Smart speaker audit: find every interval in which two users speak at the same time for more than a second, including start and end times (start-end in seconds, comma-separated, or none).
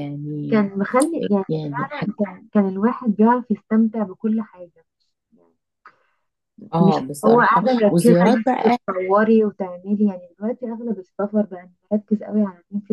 6.8-8.8